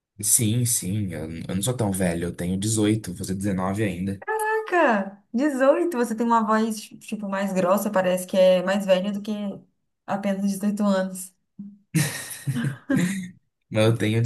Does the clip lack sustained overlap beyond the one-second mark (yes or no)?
yes